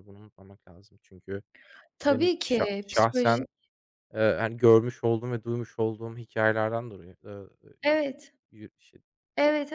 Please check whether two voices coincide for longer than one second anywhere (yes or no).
yes